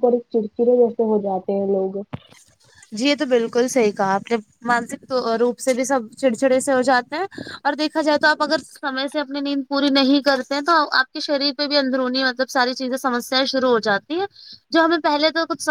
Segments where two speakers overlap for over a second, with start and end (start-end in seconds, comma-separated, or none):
none